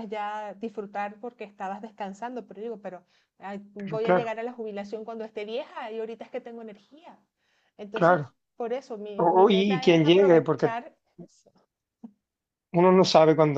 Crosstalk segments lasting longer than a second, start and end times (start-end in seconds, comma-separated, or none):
9.2-10.8